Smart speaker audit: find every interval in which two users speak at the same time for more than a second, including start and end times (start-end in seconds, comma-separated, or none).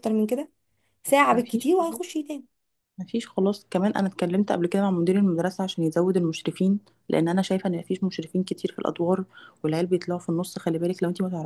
none